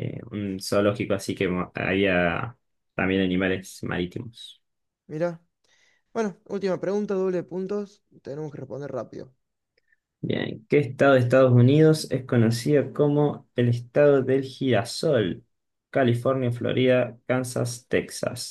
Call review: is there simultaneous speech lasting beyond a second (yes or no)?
no